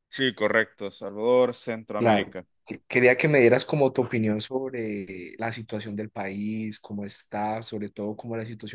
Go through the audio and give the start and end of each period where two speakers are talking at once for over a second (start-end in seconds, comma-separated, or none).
none